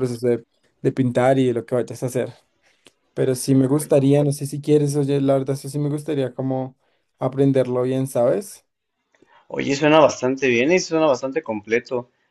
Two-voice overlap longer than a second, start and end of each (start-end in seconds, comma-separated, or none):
none